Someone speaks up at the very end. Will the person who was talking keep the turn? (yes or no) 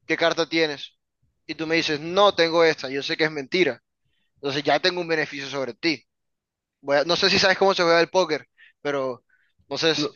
no